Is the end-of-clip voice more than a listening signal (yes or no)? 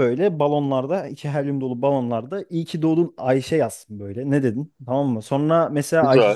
no